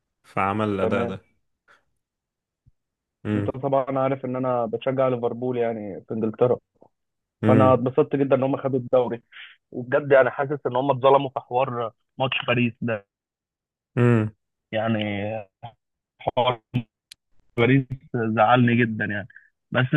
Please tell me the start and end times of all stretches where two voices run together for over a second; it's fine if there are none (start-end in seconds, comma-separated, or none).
none